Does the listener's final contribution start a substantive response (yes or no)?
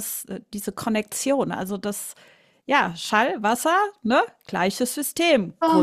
yes